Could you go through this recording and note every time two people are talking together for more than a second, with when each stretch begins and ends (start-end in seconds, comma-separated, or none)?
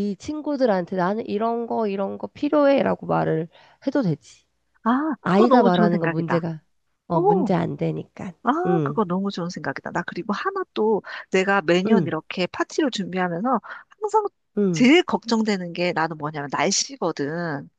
5.2-6.5